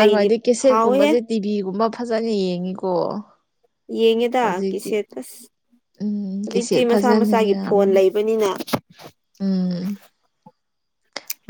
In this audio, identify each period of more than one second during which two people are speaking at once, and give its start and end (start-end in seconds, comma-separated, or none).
6.4-8.0